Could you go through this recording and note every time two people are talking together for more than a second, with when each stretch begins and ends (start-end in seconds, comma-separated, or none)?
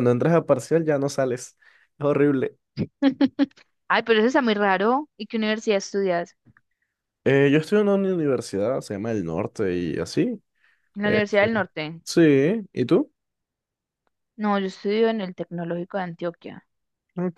none